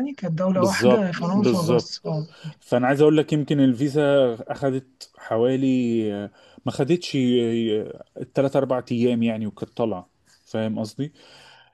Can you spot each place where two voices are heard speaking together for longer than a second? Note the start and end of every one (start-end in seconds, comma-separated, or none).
0.5-1.9